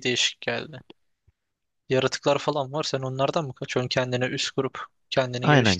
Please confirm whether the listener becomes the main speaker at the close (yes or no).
yes